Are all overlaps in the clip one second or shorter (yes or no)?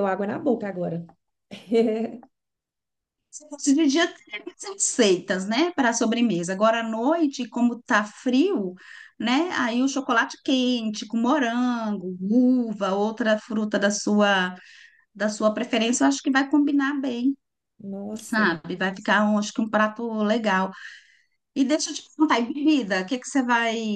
yes